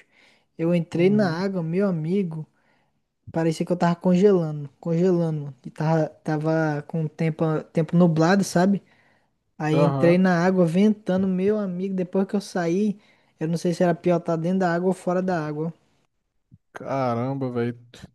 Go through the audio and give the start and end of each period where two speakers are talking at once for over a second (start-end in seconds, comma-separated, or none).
none